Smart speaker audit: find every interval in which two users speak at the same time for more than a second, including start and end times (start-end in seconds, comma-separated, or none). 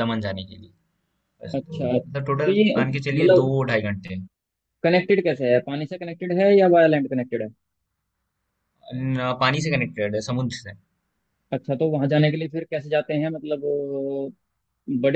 1.6-3.5